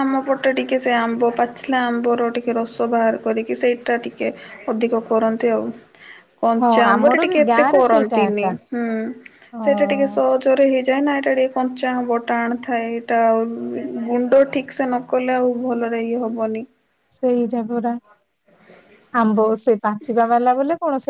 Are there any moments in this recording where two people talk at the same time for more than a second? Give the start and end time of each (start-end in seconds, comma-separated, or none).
6.6-8.5